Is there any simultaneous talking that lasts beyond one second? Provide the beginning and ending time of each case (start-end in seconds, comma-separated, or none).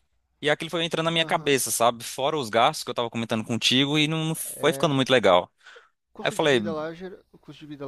none